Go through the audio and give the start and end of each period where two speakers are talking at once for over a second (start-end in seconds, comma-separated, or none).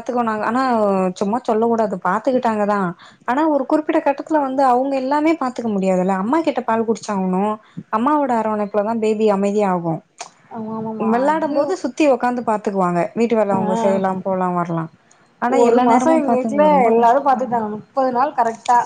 15.6-17.6